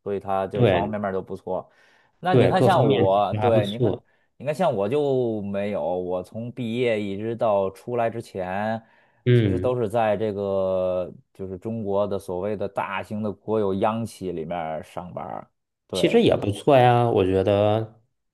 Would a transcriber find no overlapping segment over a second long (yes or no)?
no